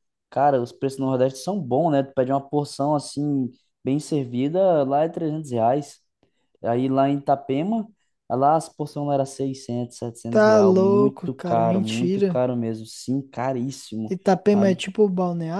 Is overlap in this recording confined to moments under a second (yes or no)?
no